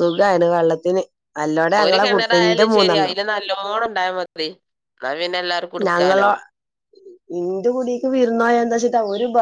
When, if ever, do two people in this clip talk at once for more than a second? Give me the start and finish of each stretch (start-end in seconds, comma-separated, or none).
1.8-3.1